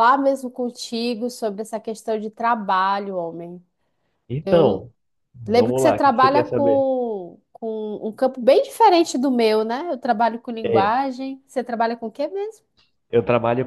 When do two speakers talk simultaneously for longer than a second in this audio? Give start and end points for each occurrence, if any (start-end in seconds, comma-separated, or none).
5.5-6.9